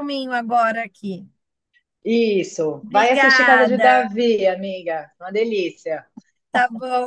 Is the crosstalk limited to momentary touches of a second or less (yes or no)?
no